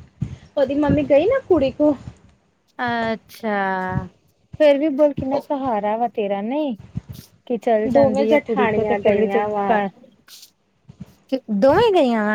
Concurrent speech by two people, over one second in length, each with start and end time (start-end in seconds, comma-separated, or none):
7.9-9.8